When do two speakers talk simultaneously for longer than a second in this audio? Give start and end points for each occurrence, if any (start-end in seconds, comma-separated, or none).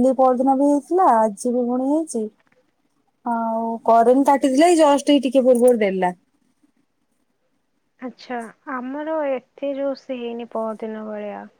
none